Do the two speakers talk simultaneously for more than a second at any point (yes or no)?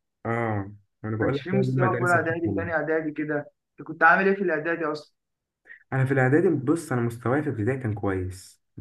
yes